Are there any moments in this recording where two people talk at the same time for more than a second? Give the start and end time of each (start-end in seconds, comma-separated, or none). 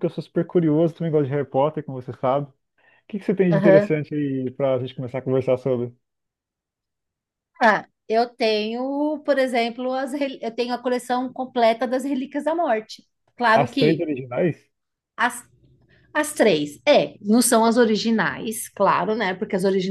none